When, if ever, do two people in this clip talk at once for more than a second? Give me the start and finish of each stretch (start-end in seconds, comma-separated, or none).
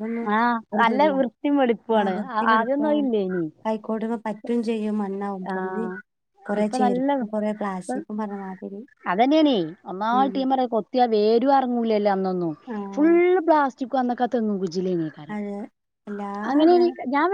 none